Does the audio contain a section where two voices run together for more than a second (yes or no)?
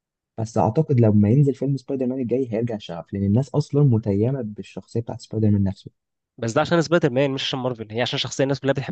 no